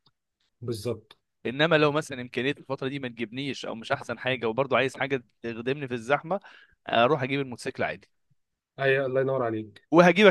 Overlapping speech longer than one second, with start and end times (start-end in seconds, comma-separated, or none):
none